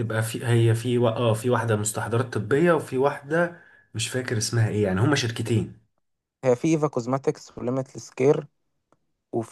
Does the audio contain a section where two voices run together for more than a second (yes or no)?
no